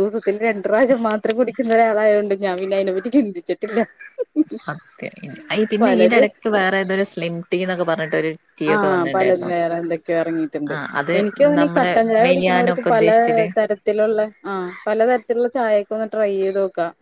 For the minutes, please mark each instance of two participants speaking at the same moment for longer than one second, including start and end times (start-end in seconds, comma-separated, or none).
11.6-13.4